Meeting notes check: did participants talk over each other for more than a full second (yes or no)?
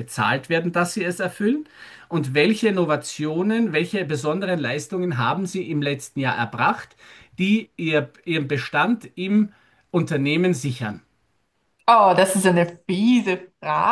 no